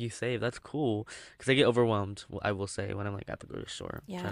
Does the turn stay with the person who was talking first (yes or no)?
no